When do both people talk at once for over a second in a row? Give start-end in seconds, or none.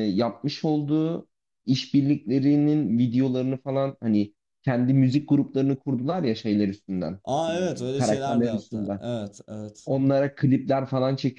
7.3-9.0